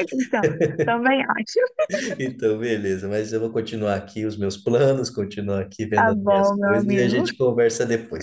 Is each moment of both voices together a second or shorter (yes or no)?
no